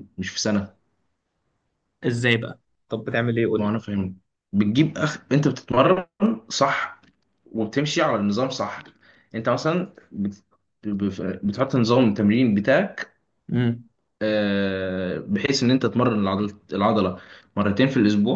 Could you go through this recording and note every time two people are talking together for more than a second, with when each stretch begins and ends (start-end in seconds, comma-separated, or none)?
none